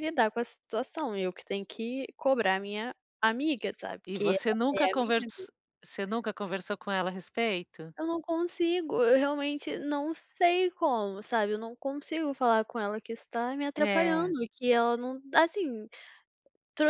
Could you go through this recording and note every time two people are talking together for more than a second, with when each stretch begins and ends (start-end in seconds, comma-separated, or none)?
4.1-5.5